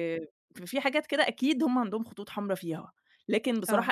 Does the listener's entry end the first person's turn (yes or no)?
no